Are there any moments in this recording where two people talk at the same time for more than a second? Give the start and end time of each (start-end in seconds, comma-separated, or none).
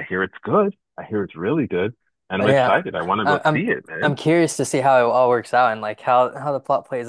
2.4-4.1